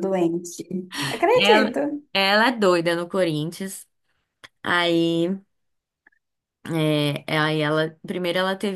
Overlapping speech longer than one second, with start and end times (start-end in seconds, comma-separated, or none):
none